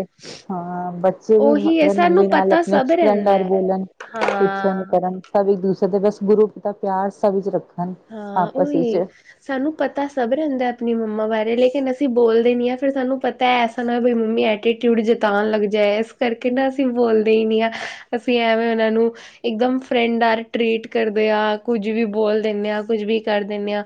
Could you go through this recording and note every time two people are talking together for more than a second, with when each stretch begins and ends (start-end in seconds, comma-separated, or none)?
1.4-3.7